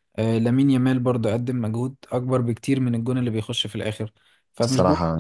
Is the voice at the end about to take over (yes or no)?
no